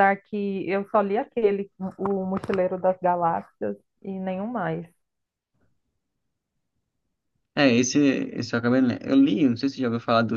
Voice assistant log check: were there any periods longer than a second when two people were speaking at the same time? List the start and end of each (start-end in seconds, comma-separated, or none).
none